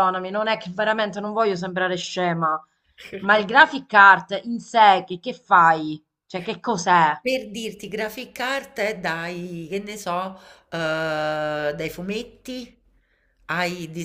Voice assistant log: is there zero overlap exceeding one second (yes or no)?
yes